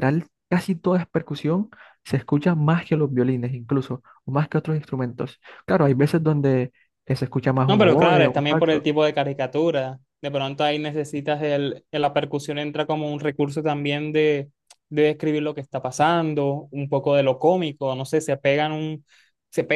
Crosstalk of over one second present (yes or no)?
yes